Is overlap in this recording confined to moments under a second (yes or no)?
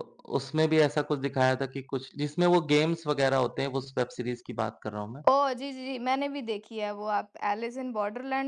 yes